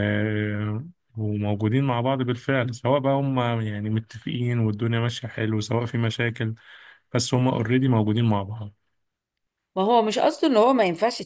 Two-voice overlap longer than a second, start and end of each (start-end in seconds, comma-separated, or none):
none